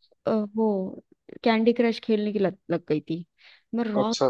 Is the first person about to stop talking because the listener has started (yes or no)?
no